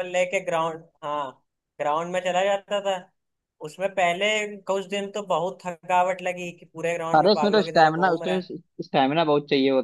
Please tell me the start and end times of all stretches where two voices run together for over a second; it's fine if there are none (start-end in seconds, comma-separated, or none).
7.2-8.5